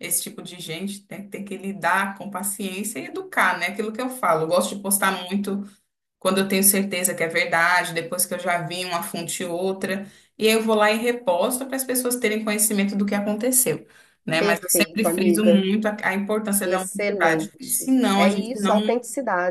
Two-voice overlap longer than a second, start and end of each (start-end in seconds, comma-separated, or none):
14.4-15.6, 16.6-18.8